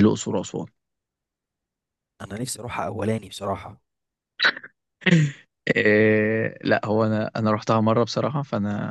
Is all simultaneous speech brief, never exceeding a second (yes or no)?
yes